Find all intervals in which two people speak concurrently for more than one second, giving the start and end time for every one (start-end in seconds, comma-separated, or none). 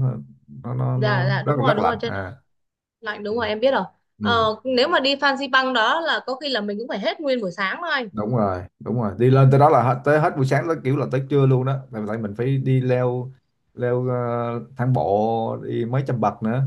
0.9-2.3